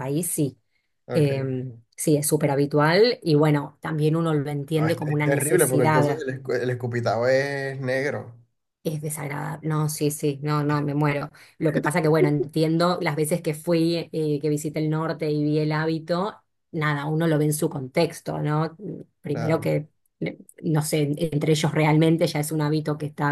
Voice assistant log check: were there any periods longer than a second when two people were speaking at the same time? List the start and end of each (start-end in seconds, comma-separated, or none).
4.7-6.2